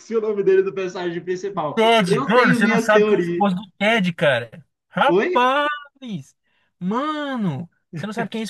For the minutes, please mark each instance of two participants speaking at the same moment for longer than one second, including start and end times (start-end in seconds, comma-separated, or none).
1.8-3.5